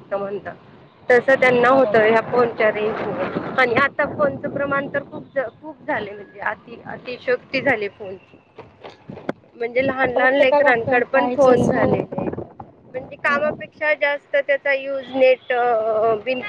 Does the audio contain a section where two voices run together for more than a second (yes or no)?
yes